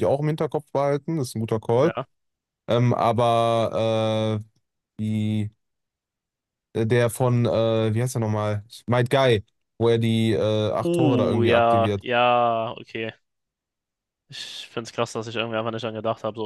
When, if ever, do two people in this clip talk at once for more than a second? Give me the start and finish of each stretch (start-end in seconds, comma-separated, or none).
10.8-12.0